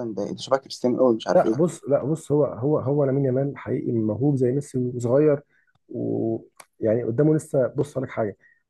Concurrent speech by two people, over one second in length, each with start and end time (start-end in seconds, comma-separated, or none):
none